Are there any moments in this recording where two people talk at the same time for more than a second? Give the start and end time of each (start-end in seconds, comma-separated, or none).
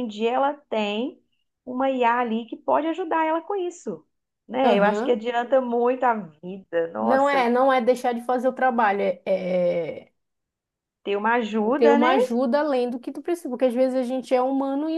none